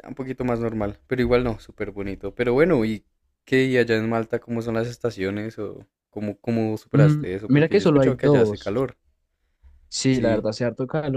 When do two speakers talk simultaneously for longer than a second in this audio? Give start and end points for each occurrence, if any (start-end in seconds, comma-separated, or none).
6.9-8.7